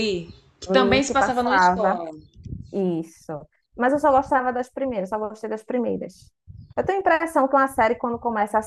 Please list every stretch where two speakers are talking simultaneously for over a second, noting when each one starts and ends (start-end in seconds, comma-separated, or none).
0.7-2.0